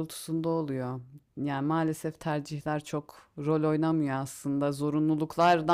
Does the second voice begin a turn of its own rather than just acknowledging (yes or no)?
no